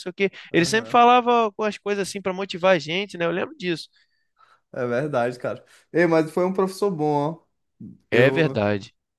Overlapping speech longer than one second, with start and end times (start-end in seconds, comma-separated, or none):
none